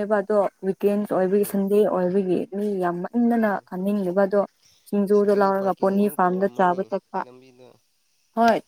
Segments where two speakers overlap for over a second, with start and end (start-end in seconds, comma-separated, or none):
5.1-6.8